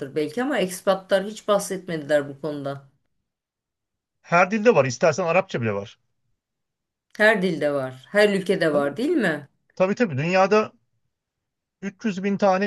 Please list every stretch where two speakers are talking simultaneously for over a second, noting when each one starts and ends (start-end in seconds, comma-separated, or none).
none